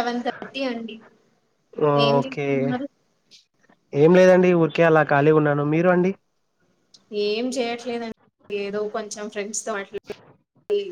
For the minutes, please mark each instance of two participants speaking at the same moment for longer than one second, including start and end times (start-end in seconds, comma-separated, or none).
none